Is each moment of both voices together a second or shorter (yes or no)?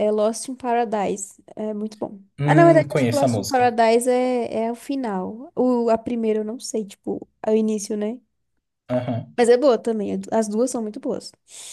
no